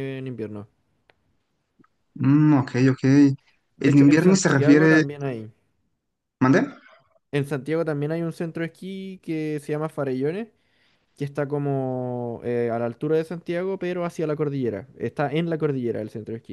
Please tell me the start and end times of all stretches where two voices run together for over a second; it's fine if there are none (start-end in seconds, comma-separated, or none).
3.8-5.0